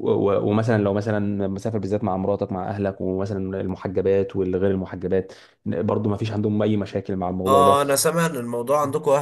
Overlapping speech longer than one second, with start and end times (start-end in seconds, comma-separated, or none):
none